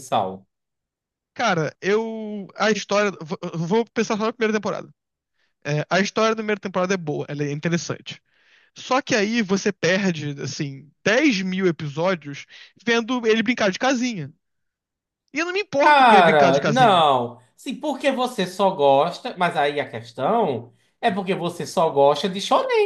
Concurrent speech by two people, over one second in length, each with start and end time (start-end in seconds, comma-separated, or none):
15.8-17.0